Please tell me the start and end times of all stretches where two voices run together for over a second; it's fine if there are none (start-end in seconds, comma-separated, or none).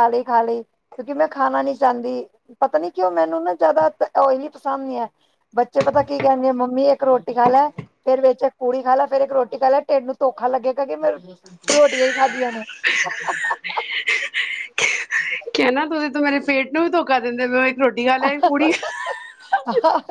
none